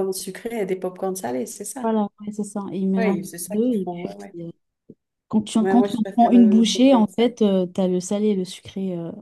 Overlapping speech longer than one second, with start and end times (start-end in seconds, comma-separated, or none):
3.0-4.3, 5.6-7.3